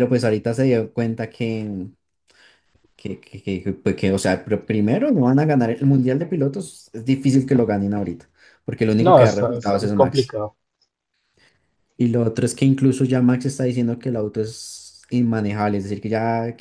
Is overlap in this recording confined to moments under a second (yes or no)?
no